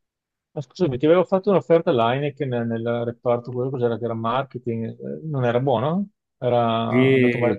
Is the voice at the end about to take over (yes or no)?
yes